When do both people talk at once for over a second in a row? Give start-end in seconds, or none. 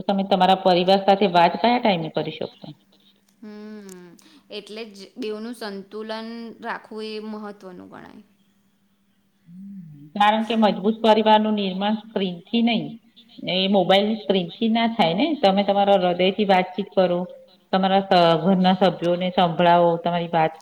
none